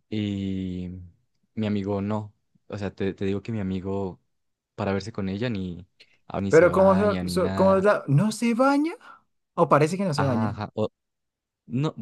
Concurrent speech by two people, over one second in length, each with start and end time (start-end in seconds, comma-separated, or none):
6.5-7.9